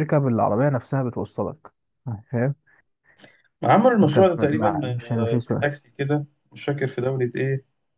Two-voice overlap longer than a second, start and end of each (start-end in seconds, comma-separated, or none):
4.0-5.7